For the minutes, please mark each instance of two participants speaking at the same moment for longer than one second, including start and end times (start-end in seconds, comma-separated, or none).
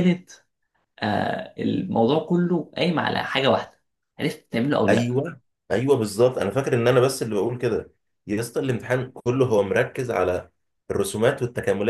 none